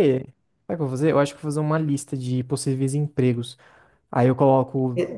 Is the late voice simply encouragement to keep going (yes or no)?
yes